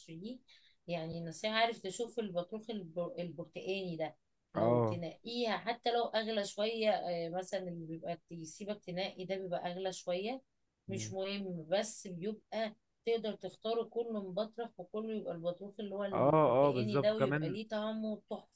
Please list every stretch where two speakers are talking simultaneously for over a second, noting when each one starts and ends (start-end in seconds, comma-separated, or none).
16.1-17.6